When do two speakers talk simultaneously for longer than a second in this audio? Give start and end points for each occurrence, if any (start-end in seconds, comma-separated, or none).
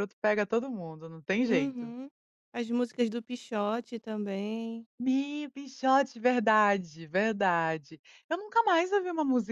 none